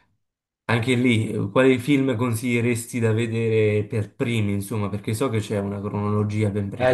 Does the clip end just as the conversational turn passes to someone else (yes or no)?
yes